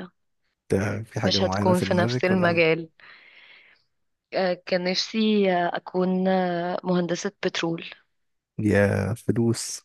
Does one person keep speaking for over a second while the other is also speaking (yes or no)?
yes